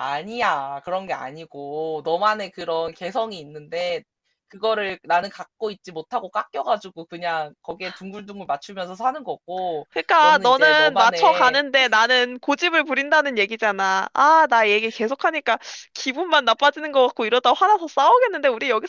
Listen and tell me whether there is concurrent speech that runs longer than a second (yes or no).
yes